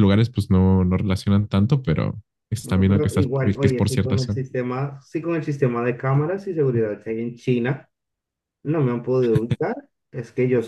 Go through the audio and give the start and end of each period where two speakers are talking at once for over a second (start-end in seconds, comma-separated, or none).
2.6-4.4